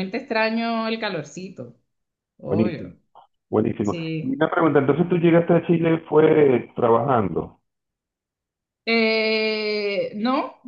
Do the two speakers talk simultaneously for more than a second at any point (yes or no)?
no